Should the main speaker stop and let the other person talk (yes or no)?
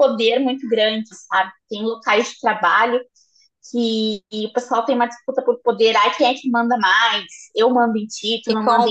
yes